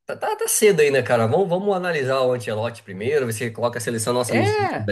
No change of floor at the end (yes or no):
yes